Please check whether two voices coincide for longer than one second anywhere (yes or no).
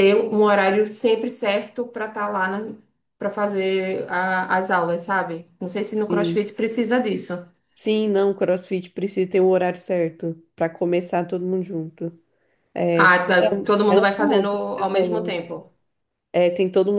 yes